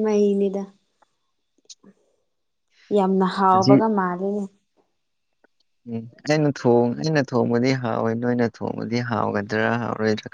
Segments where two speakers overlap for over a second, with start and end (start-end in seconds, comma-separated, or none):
none